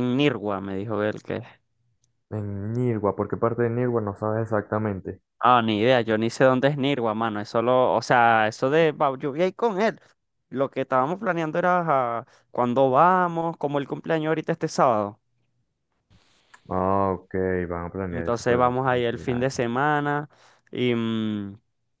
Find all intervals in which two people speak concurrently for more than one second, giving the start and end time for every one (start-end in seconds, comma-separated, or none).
18.1-19.6